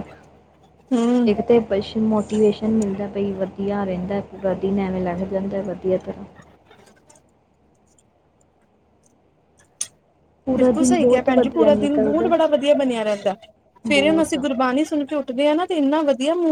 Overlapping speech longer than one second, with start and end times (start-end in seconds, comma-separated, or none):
10.6-12.3